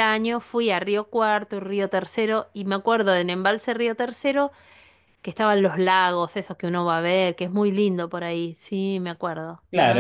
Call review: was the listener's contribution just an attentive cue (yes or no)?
no